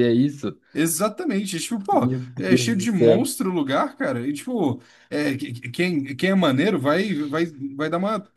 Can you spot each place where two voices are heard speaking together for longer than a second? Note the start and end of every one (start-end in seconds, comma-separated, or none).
1.9-3.3